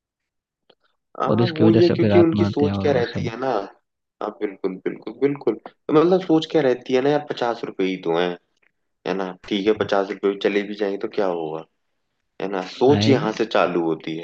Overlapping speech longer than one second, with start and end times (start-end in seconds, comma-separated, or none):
1.3-3.3